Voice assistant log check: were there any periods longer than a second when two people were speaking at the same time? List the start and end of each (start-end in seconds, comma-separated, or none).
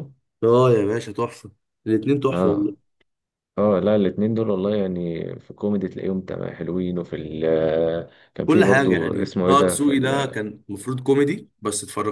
8.4-10.4